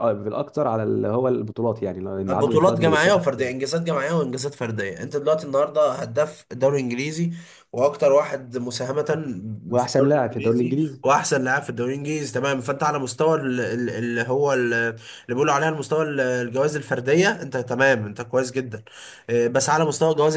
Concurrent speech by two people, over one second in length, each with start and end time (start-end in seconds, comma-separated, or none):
2.3-3.5, 9.8-11.0